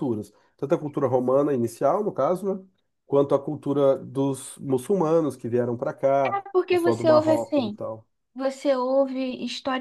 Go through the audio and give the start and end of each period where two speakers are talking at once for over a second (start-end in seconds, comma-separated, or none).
6.2-7.8